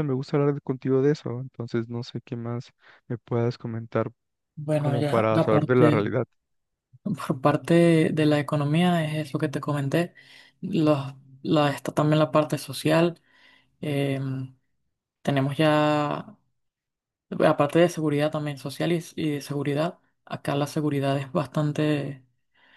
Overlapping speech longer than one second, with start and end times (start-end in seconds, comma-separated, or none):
4.8-6.0